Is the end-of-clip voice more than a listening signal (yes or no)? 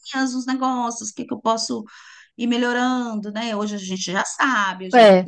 no